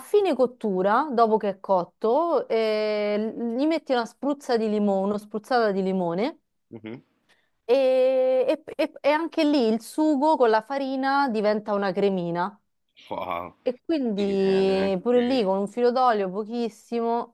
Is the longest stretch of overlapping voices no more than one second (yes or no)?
no